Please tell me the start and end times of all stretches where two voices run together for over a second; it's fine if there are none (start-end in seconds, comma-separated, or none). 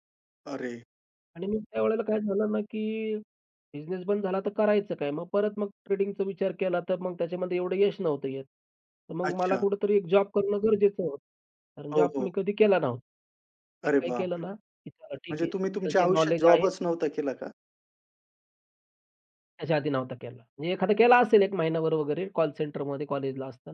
15.1-16.7